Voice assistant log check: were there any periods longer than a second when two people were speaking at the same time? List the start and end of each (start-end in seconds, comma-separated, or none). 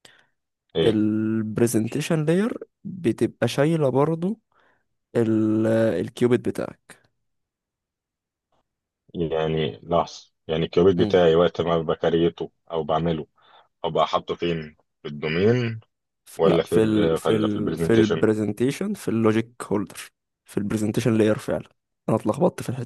16.4-18.3